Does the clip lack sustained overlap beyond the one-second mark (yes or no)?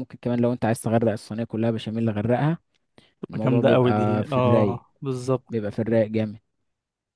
no